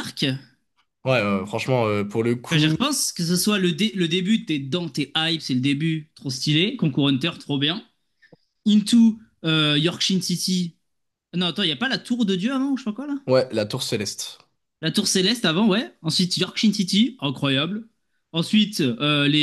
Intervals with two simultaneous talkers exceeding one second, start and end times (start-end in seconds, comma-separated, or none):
none